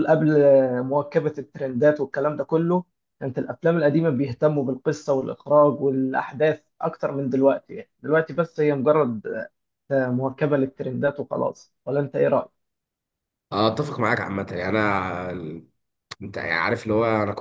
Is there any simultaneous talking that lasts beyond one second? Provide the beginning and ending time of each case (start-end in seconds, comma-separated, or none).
none